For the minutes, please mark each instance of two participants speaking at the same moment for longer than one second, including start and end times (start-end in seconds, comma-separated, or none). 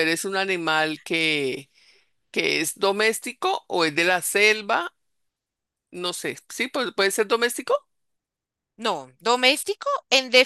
none